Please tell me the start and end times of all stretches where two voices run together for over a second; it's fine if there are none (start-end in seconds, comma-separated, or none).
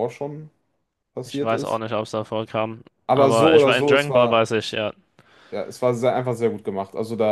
3.1-4.5